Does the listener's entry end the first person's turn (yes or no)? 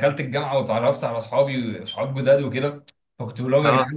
no